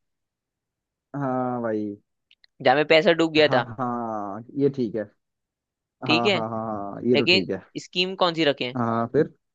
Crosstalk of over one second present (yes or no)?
no